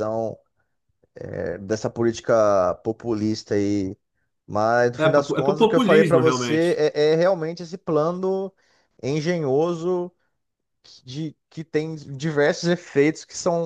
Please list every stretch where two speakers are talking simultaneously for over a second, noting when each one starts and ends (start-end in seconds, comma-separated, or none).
5.0-6.8